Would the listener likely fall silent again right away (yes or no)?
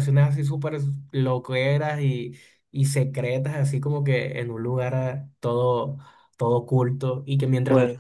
yes